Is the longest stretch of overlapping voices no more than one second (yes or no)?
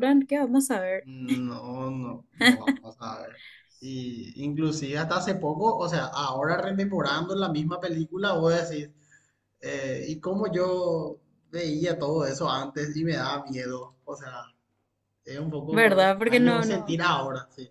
no